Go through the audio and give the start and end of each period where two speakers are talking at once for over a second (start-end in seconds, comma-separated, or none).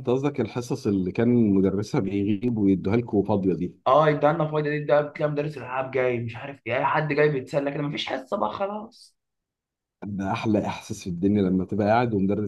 none